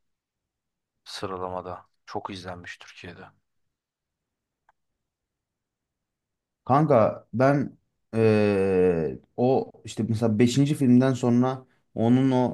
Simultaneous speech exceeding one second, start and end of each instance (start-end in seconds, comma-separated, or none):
none